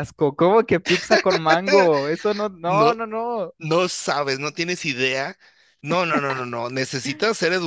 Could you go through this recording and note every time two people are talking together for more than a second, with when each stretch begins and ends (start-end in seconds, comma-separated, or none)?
none